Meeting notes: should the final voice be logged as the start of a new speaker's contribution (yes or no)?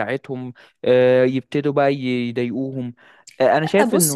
yes